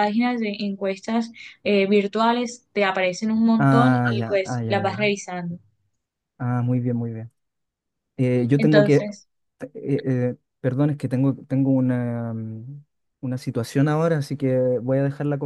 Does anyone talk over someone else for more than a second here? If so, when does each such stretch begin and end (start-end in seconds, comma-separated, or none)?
3.6-5.0